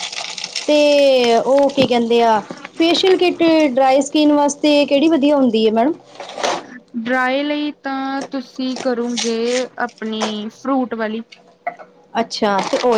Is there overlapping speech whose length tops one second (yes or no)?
no